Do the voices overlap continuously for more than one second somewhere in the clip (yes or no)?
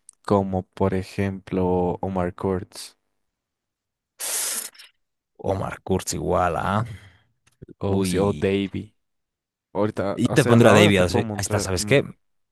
yes